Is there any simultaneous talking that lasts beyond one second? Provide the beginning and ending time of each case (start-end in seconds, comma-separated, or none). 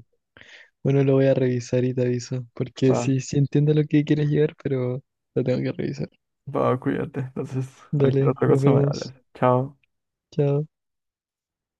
7.9-9.1